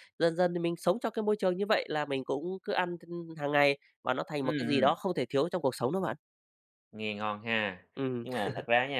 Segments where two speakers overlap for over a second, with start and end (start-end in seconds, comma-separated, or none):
none